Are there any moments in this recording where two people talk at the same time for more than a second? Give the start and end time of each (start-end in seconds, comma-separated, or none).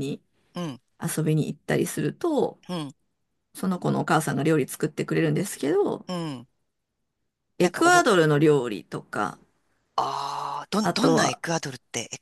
none